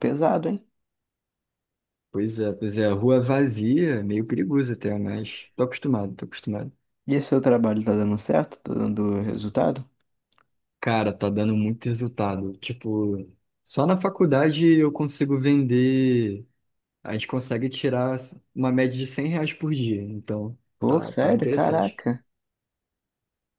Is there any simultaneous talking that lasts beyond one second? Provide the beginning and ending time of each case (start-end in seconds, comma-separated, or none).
20.8-22.0